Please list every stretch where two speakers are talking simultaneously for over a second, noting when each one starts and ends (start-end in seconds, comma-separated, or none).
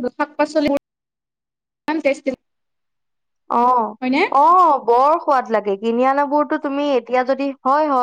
none